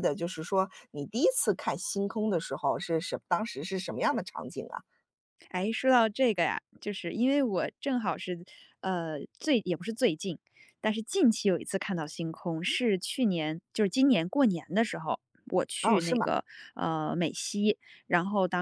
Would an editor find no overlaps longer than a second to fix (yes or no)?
yes